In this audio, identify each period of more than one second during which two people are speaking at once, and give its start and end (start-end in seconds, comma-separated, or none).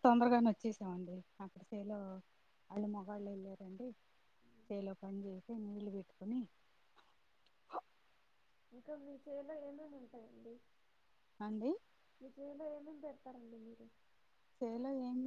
none